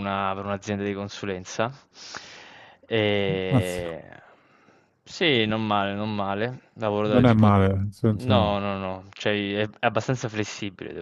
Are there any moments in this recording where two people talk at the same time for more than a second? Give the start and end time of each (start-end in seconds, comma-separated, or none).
none